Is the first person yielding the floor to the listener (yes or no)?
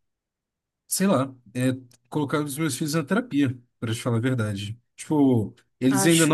no